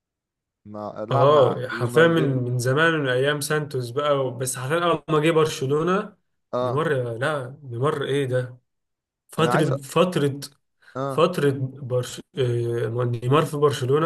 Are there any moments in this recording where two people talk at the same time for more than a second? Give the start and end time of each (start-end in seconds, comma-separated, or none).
1.1-2.5